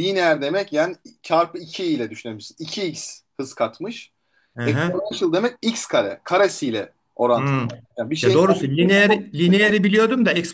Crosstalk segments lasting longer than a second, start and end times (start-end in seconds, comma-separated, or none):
8.2-9.7